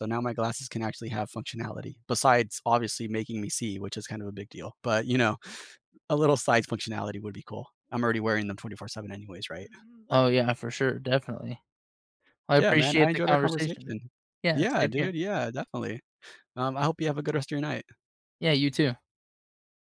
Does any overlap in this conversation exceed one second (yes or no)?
yes